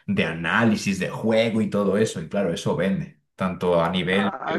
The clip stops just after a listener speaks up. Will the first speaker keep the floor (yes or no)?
no